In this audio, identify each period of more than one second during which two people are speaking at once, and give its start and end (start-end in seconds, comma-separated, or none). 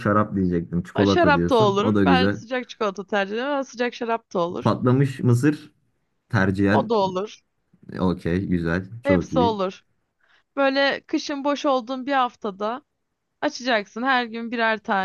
0.9-2.4